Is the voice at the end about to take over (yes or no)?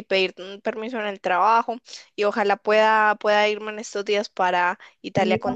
yes